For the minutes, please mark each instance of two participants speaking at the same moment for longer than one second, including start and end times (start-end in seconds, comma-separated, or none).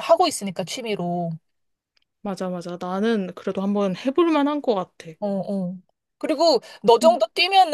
none